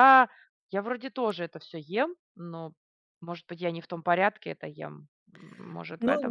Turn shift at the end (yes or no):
yes